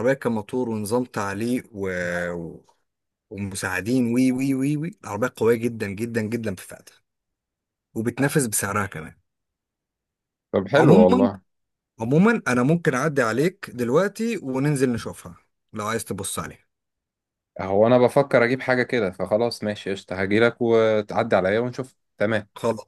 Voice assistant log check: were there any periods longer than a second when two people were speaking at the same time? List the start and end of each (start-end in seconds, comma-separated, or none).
none